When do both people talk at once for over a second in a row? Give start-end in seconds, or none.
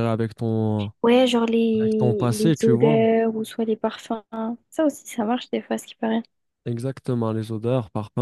1.8-3.0